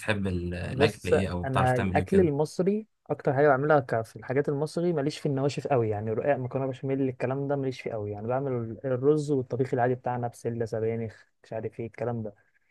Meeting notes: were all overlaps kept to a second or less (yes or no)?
no